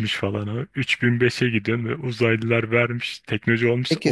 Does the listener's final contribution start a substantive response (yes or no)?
yes